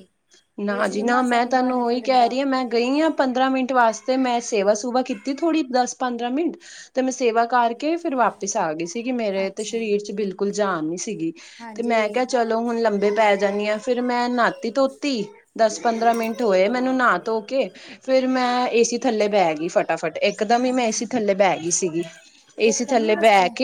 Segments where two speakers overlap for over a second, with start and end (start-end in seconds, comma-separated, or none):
0.8-2.3